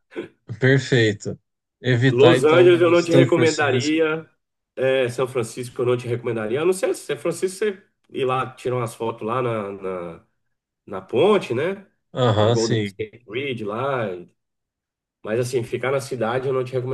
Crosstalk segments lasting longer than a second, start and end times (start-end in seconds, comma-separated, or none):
2.1-4.0